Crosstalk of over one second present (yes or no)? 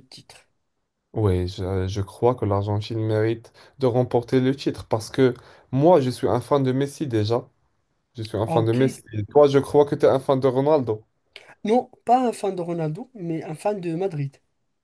no